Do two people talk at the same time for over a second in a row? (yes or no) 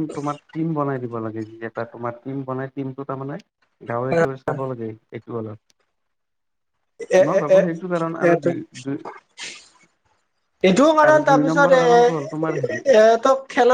yes